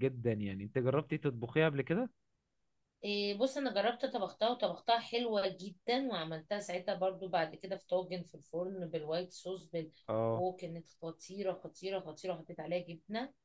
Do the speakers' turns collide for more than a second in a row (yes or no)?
no